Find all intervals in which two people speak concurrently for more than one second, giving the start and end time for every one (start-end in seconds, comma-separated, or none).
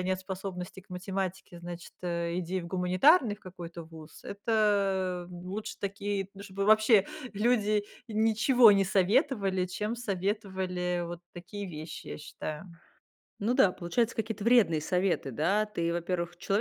none